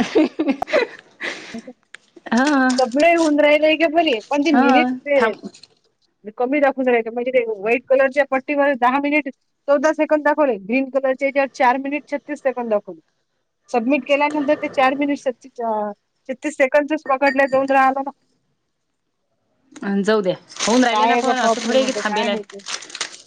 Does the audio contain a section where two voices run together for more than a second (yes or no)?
yes